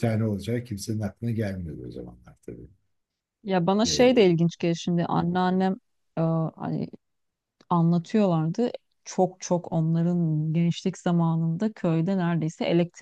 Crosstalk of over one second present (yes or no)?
no